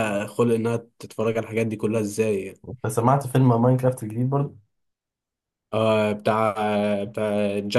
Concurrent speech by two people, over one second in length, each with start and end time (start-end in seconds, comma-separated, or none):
none